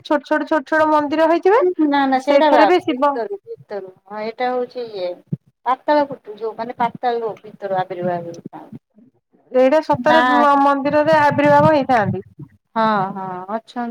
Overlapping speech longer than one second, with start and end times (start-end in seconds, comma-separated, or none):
none